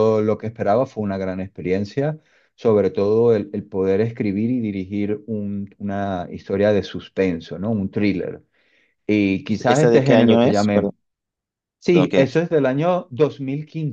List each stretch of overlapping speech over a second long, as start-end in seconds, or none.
9.5-10.9